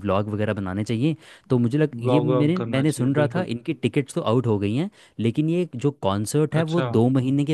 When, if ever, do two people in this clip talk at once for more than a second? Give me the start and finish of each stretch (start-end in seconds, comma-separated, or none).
1.9-3.5